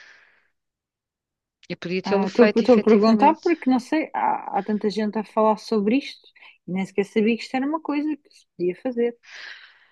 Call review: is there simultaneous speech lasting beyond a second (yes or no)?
yes